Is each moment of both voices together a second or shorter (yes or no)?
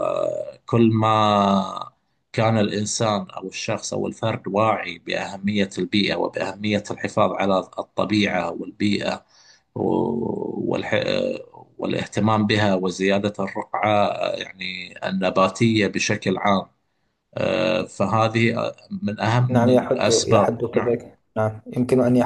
no